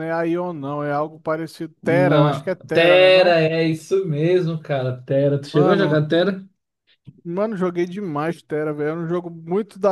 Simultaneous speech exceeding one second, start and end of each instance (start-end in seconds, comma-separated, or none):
1.8-3.4